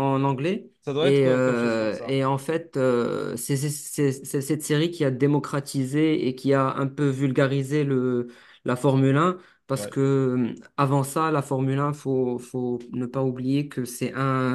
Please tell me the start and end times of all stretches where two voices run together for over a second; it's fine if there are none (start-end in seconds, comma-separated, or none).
0.8-2.2